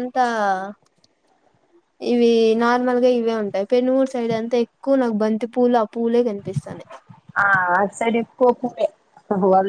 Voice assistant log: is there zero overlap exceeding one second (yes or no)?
yes